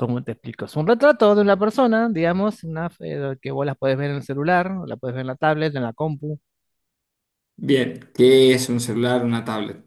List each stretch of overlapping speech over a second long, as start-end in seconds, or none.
none